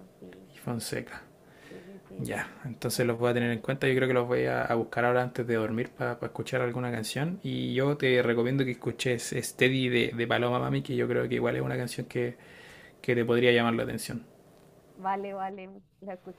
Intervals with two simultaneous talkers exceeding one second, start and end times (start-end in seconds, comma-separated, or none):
2.2-4.2